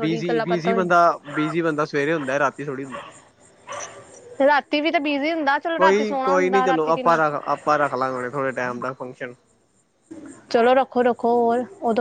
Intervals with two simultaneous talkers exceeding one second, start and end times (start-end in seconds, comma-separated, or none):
5.8-7.2